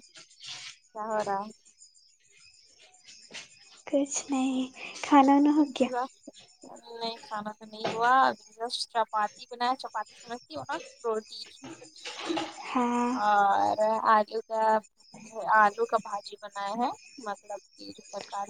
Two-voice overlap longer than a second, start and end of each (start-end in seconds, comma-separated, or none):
none